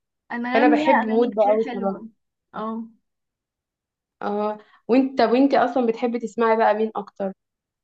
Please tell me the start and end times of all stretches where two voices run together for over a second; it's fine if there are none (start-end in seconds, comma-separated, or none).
0.5-1.9